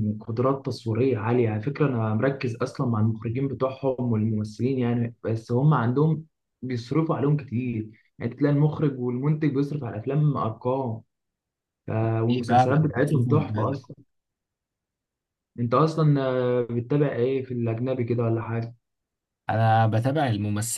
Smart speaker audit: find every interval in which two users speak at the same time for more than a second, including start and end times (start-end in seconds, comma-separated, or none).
12.5-13.8